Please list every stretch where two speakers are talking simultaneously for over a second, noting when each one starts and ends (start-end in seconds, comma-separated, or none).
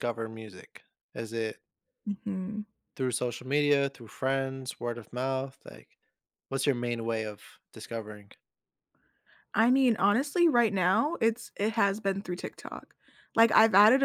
none